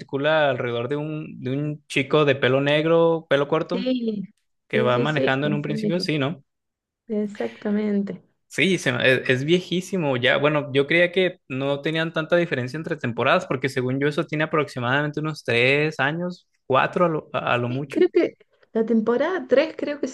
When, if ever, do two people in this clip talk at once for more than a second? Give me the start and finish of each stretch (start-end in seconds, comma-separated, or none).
4.7-6.0